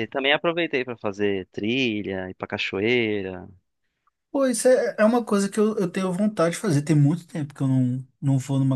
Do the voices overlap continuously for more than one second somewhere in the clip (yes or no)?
no